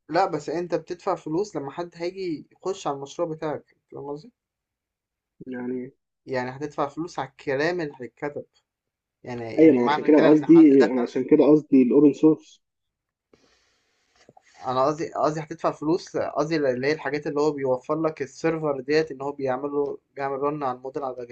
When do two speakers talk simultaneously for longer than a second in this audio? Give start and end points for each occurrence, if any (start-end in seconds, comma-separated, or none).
9.6-11.5